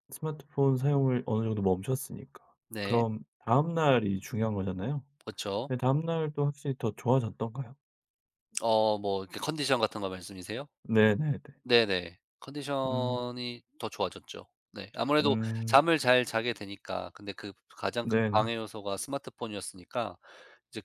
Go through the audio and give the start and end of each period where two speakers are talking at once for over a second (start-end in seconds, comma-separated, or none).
none